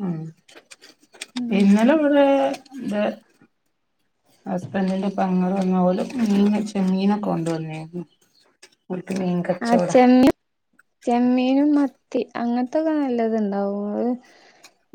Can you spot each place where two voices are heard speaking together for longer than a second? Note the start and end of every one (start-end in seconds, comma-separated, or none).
none